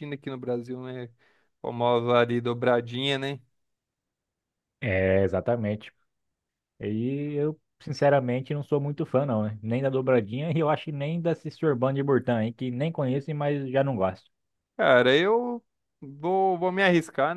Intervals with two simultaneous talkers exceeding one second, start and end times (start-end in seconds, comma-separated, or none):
none